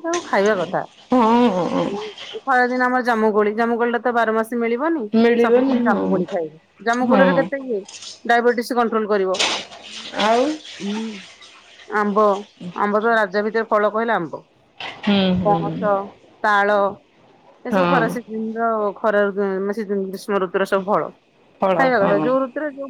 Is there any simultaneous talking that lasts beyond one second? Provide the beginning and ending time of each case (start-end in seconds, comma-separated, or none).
none